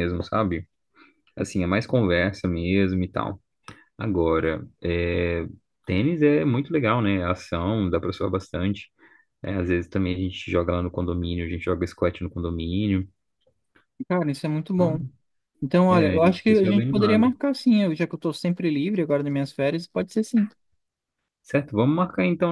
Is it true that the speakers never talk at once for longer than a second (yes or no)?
no